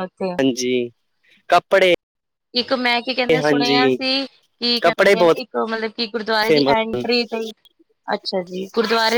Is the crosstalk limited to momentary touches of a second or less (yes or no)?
yes